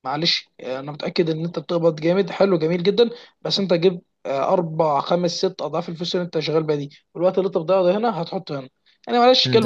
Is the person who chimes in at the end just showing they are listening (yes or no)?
no